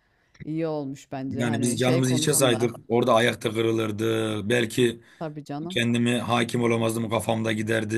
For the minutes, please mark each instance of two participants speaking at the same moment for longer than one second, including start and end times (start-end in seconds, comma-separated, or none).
1.3-2.7